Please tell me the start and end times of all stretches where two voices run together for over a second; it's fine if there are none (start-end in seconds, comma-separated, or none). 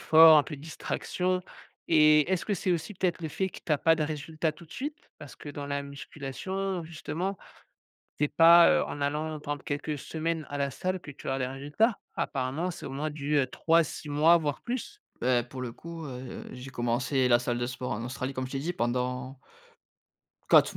none